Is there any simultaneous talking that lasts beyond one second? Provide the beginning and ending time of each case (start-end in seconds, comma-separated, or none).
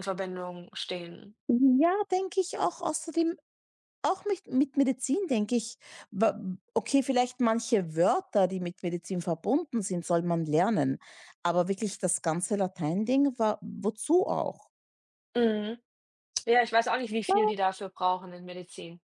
none